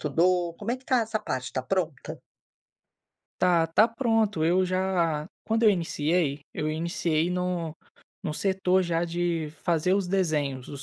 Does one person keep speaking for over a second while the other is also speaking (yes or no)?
no